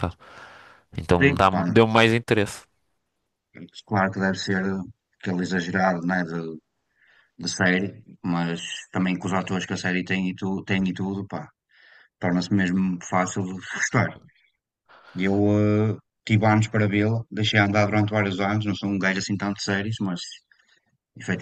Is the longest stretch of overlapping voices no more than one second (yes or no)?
yes